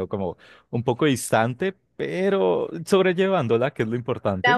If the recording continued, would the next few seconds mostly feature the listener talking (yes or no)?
yes